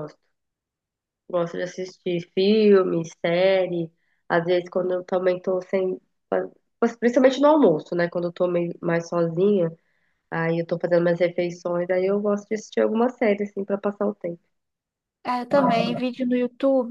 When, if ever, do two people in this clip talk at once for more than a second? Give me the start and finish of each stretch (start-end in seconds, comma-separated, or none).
none